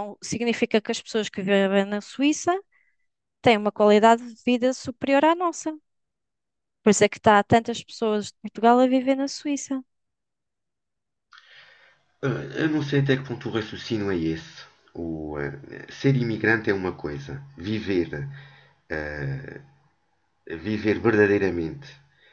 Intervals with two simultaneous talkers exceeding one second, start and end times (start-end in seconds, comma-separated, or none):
none